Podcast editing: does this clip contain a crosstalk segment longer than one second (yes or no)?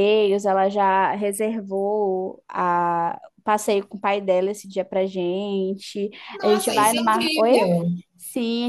yes